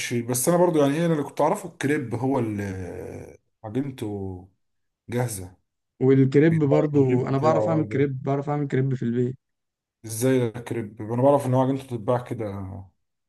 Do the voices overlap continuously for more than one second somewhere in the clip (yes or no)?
yes